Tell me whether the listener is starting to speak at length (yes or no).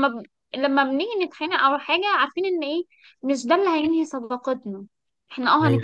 no